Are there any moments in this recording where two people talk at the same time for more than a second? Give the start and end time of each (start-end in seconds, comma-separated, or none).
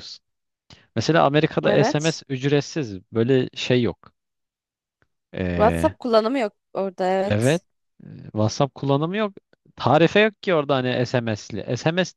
none